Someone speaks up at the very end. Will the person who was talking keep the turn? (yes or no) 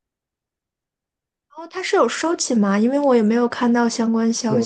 no